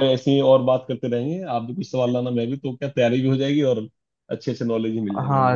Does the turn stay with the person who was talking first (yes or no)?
no